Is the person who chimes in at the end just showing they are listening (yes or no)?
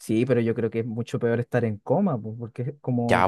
no